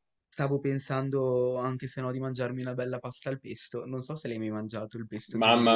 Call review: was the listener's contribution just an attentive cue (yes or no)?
no